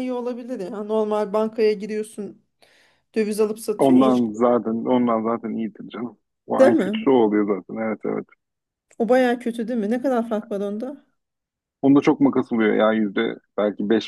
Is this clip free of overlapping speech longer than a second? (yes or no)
yes